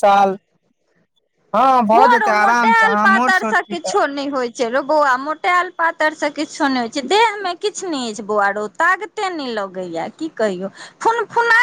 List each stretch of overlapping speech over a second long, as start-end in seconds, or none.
1.9-4.0